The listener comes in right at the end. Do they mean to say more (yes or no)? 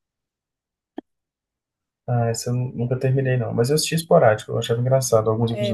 yes